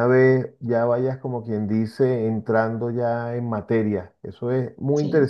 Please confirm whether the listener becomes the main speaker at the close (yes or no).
no